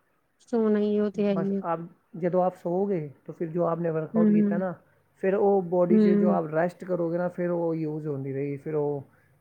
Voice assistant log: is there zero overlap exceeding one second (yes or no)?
yes